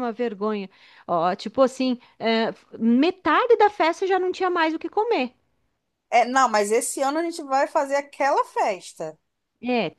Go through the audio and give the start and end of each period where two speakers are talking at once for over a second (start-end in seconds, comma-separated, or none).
none